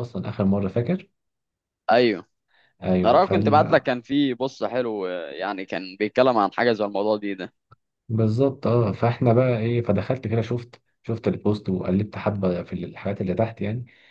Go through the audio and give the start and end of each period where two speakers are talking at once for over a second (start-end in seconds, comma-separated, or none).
none